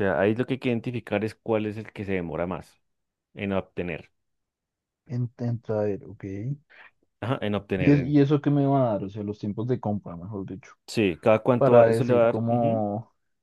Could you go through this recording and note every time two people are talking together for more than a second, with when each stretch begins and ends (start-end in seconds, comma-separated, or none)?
11.6-12.8